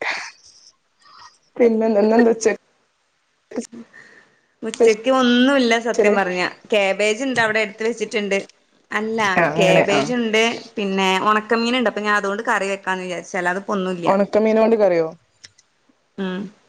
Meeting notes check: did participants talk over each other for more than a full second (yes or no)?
no